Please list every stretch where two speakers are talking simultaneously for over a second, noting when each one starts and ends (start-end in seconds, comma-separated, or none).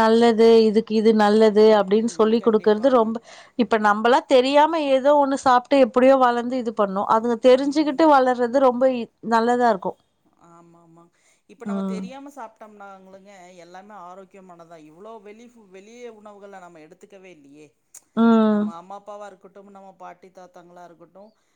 1.4-3.0